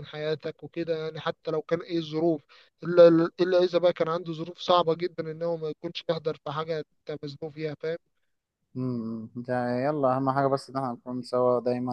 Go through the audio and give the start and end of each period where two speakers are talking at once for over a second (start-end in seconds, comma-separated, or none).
none